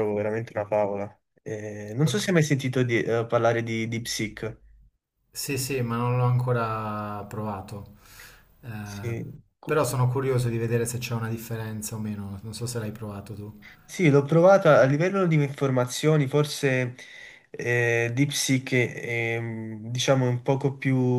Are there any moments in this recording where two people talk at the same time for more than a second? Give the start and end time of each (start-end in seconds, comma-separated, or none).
none